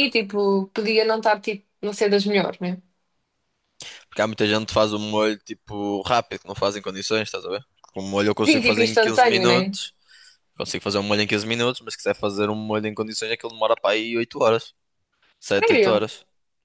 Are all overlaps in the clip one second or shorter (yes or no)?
no